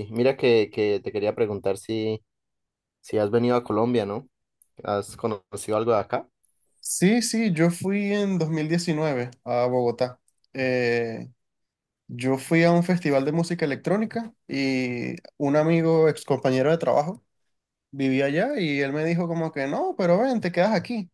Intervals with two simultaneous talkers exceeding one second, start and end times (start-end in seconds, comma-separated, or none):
none